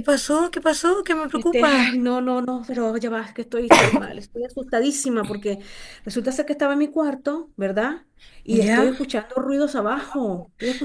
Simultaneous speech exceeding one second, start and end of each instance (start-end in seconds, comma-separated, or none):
none